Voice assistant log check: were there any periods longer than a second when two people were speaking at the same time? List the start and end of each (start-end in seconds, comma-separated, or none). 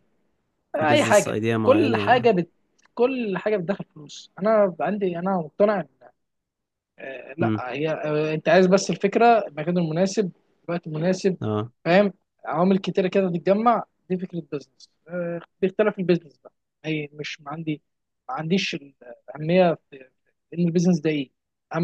0.7-2.3